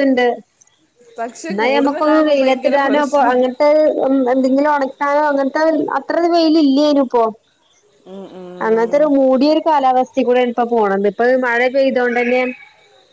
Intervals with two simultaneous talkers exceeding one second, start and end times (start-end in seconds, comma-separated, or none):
1.5-3.4